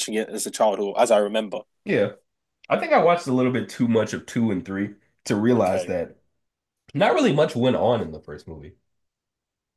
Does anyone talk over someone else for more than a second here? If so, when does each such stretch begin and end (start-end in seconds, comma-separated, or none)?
none